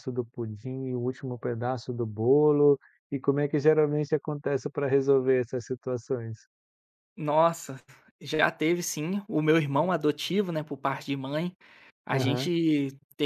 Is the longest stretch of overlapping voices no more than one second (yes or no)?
yes